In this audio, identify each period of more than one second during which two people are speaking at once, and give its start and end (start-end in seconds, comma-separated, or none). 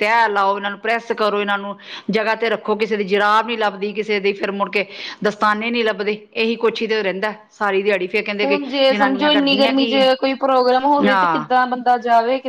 8.4-10.0